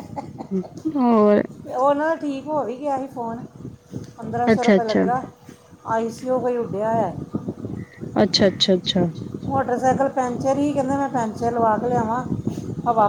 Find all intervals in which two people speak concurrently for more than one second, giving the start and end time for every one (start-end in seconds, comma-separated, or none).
none